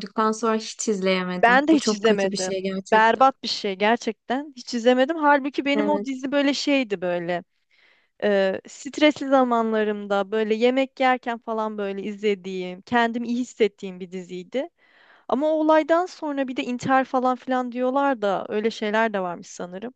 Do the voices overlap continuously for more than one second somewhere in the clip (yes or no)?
yes